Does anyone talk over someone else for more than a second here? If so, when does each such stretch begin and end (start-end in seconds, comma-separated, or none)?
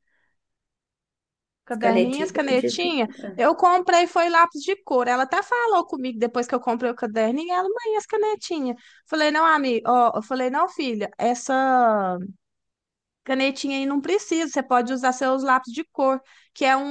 1.7-3.4